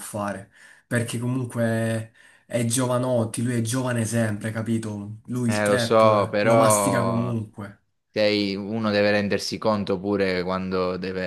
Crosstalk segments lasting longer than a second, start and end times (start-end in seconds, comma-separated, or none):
5.5-7.4